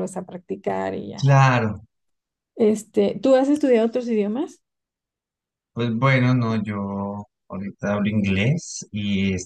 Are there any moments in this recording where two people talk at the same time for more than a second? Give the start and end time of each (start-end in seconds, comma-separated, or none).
none